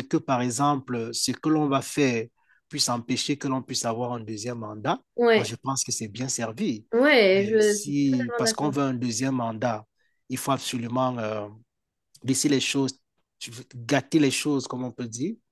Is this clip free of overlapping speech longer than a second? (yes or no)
no